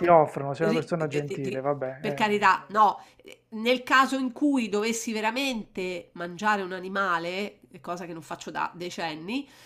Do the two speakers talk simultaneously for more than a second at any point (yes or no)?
yes